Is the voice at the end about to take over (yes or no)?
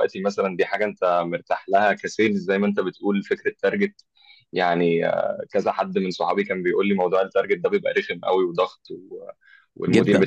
no